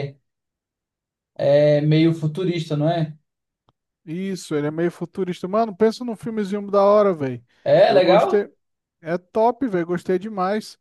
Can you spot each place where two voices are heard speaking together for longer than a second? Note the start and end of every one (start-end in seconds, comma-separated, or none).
none